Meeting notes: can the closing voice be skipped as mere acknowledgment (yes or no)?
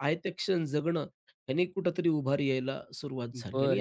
no